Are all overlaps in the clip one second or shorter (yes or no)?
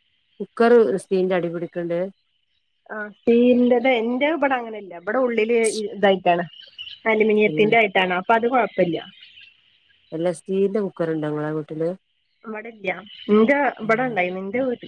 yes